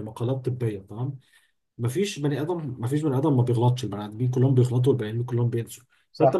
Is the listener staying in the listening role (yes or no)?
yes